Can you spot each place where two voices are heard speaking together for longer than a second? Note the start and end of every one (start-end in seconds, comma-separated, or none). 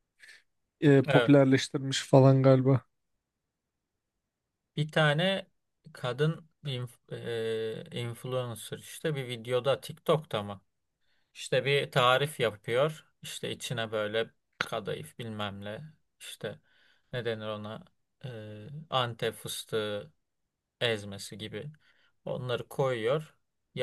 none